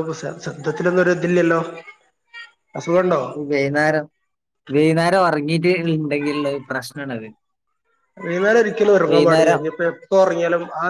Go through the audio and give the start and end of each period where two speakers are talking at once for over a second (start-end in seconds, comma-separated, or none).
none